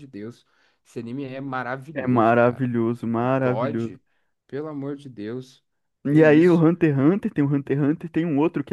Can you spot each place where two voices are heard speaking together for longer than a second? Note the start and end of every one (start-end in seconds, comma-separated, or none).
1.9-3.9